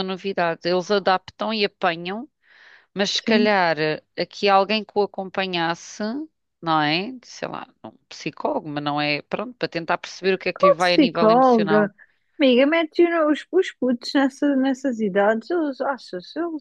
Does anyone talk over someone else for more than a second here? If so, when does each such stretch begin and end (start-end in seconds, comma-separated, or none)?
10.5-11.9